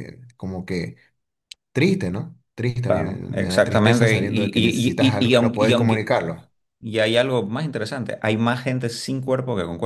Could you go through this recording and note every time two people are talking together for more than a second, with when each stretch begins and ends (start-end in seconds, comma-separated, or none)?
2.9-6.1